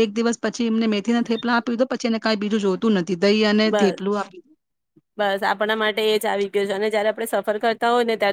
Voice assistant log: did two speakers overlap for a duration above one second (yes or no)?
no